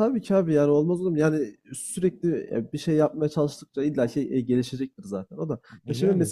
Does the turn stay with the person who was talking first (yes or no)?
yes